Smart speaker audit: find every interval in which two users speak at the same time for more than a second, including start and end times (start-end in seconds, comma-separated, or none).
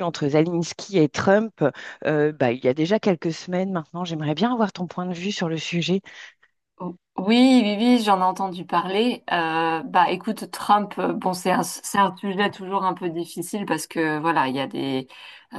none